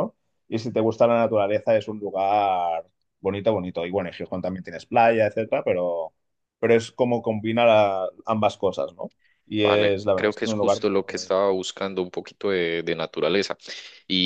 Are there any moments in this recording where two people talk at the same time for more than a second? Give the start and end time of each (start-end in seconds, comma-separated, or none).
9.6-11.4